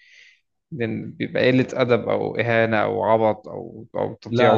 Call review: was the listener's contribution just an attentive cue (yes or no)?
no